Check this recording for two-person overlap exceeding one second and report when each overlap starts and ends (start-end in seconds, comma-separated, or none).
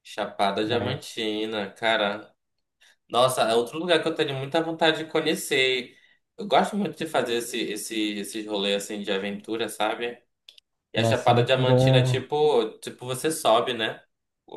11.0-12.2